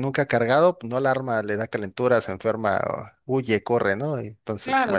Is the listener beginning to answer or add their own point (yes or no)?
yes